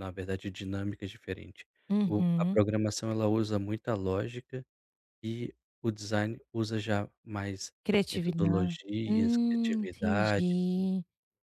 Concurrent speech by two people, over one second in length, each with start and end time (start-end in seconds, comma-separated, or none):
8.1-10.5